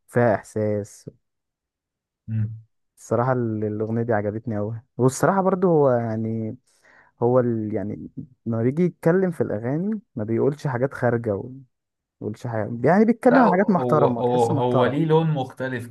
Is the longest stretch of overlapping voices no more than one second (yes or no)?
no